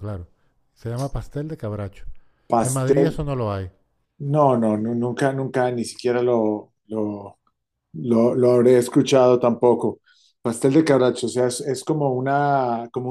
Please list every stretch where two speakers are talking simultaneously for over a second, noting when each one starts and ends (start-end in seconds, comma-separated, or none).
none